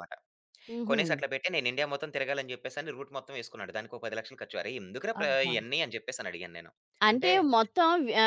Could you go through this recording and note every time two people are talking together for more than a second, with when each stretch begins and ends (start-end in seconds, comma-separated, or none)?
none